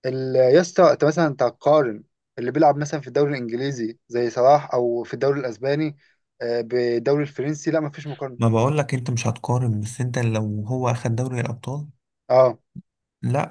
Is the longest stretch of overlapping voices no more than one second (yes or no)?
yes